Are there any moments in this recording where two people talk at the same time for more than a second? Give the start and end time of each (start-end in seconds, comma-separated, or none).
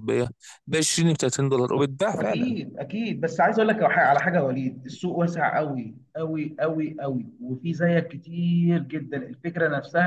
none